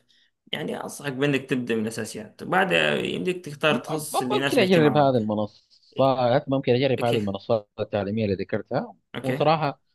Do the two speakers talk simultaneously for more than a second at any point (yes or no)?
yes